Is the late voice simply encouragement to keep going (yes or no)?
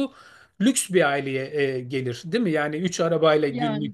yes